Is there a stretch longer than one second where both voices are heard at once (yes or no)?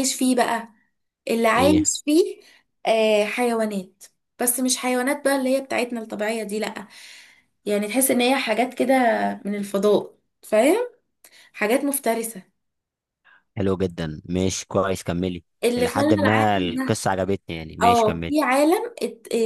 yes